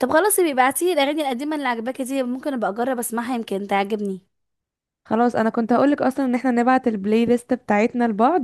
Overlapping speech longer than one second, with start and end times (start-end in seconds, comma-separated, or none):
none